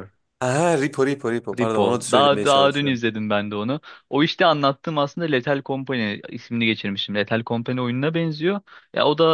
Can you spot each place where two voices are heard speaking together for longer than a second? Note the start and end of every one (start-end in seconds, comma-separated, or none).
1.6-3.0